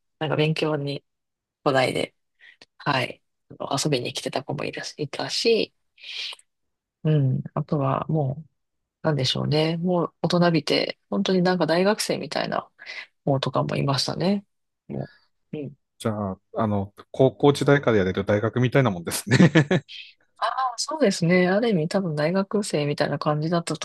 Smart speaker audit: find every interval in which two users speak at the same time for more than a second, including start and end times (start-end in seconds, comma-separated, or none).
none